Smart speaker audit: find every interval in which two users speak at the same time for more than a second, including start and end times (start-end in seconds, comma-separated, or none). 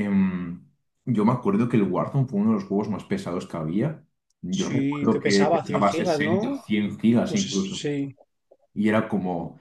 4.5-6.6